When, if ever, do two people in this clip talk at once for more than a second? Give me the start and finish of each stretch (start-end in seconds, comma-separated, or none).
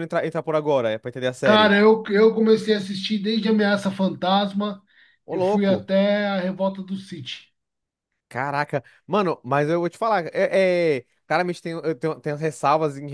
none